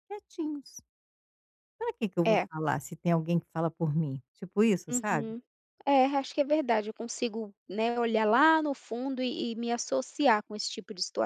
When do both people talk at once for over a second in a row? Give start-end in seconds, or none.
none